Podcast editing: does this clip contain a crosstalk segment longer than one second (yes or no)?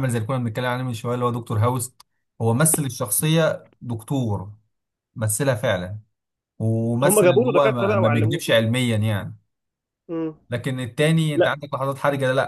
yes